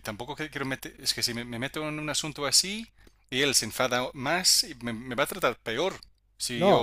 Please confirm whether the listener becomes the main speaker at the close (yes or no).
yes